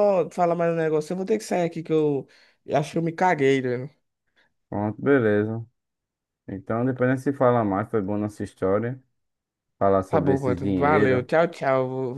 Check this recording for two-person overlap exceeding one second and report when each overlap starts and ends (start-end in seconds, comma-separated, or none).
10.1-11.3